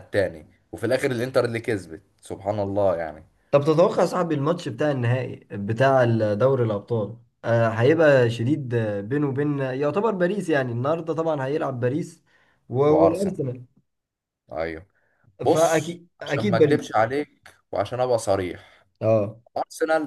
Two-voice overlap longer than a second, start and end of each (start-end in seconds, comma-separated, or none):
15.5-16.9